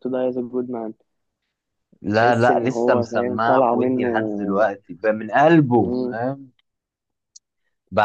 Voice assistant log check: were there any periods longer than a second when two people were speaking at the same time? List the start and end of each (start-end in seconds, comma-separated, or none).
2.1-4.1